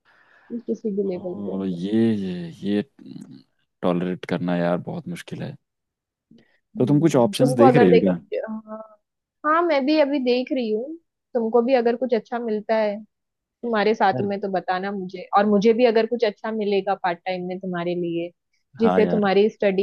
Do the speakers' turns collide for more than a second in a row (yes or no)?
yes